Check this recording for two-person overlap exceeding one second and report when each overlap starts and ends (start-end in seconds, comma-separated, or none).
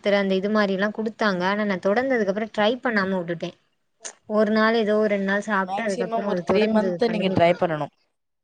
5.7-7.6